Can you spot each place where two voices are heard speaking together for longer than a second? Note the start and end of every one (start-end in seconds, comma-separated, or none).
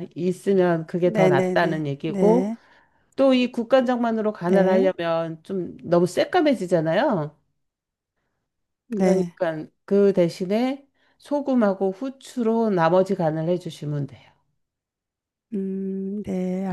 1.1-2.5